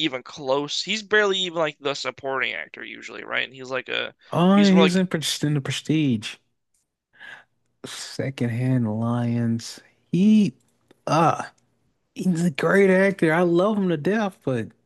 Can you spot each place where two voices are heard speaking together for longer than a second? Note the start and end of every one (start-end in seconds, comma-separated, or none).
none